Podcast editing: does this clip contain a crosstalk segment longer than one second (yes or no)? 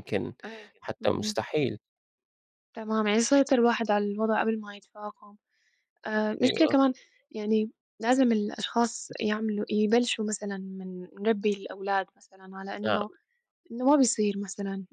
no